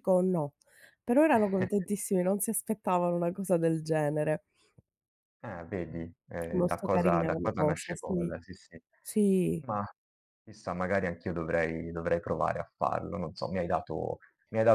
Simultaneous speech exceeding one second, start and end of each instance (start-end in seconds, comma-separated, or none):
6.5-8.3